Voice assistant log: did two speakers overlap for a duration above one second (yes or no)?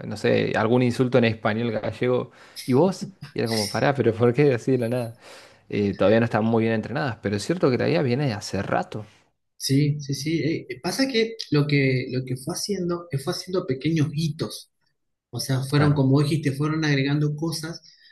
no